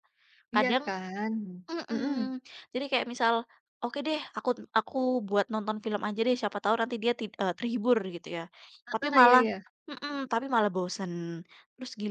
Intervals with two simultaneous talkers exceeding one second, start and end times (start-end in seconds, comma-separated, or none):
none